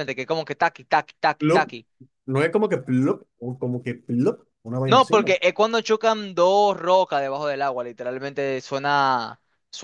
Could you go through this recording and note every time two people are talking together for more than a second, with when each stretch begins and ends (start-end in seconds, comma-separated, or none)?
none